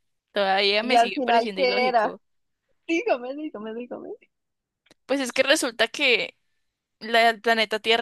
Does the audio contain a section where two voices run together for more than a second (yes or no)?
yes